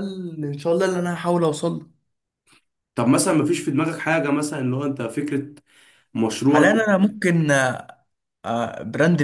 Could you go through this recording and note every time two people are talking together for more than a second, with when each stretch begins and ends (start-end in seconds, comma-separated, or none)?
none